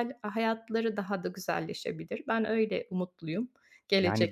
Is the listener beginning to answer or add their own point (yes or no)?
yes